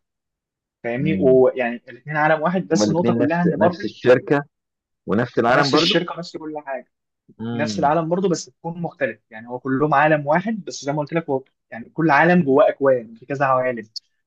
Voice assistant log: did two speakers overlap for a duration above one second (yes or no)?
yes